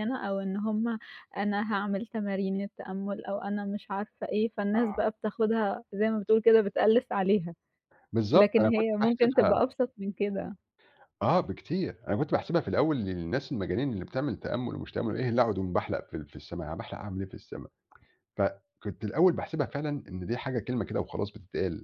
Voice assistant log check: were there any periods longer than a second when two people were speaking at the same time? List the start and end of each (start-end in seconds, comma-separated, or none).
8.3-9.6